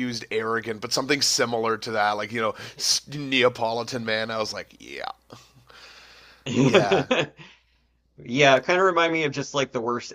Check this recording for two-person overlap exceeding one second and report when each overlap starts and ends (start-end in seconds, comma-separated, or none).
none